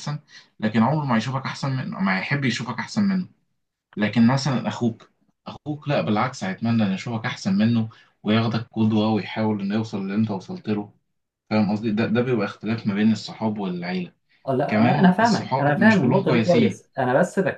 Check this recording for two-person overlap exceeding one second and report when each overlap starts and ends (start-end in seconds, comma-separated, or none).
14.7-16.8